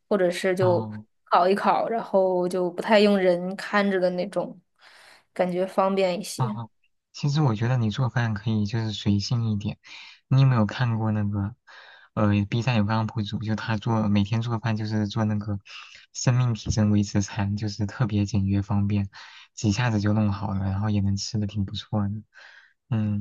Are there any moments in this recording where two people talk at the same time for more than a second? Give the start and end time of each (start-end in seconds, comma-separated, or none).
none